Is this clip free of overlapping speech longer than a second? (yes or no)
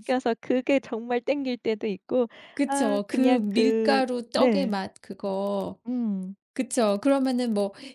no